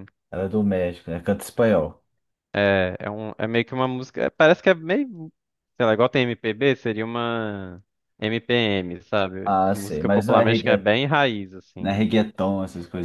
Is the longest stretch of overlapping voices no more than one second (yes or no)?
no